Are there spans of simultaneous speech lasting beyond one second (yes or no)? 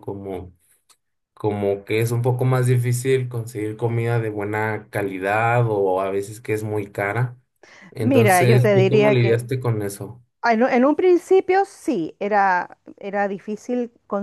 yes